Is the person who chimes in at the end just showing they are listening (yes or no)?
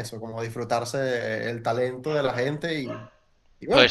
yes